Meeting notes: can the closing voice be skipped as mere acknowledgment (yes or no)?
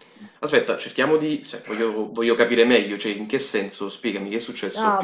no